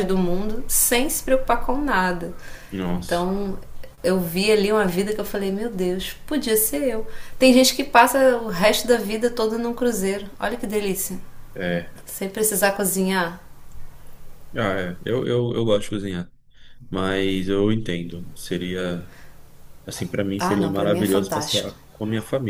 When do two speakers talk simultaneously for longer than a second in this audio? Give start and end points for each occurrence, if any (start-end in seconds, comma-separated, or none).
20.4-21.7